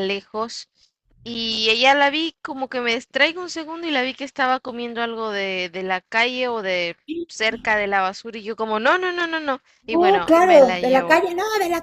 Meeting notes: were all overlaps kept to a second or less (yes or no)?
no